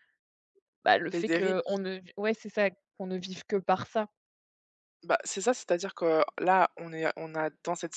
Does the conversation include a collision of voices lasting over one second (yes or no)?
no